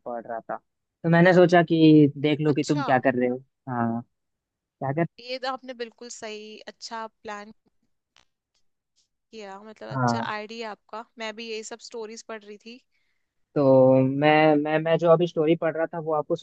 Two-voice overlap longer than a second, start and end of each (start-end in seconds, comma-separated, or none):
none